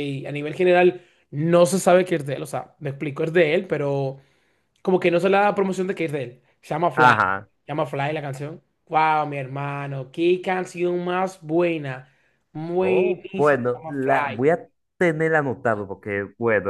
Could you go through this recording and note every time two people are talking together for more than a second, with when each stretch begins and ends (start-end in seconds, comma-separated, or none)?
12.8-14.4